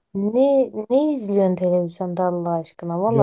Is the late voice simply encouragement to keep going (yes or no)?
yes